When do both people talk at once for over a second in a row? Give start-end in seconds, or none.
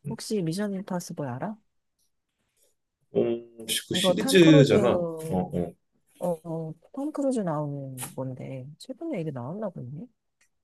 3.9-5.5